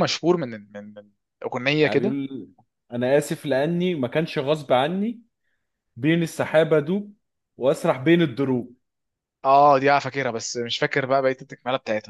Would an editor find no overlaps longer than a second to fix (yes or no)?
yes